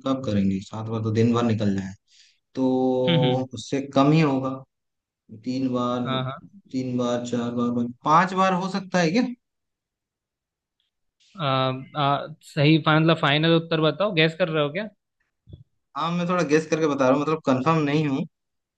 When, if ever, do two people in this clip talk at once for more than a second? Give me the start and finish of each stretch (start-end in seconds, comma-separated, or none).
none